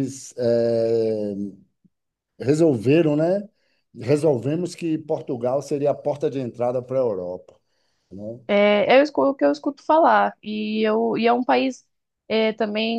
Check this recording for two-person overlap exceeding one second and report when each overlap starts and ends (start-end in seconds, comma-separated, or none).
none